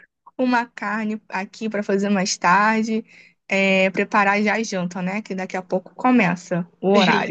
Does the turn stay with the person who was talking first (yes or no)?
no